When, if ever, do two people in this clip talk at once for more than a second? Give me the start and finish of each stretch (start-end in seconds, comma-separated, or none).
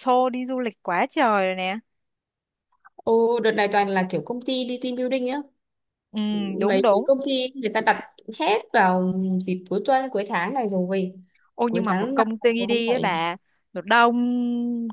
11.7-13.1